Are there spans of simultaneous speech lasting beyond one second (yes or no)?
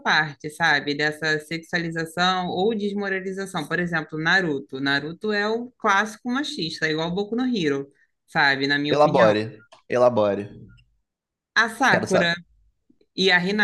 no